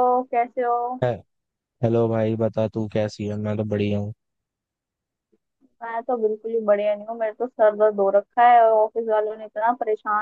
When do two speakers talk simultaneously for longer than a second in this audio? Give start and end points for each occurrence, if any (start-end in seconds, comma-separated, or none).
none